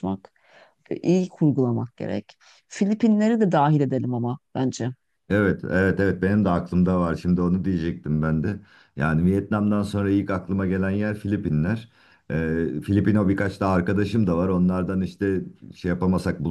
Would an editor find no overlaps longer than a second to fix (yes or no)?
yes